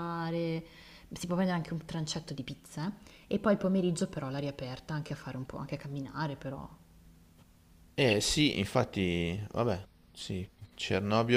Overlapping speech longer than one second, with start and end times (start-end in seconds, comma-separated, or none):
none